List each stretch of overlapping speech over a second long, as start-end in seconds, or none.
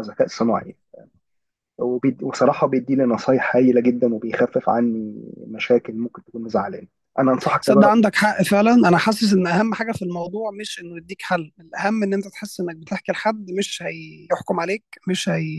none